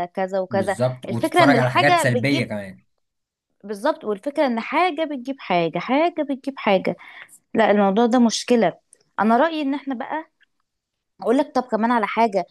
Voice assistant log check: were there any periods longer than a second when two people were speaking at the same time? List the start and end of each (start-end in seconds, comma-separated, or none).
0.5-2.5